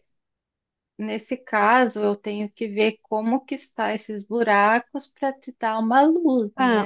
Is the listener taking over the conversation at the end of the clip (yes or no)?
yes